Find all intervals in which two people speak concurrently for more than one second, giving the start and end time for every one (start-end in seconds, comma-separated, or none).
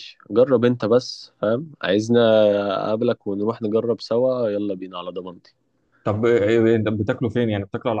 none